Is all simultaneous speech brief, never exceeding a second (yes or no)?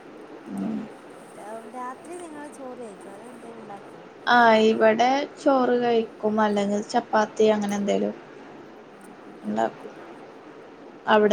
yes